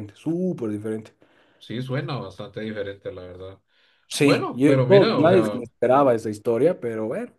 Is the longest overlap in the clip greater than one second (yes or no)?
yes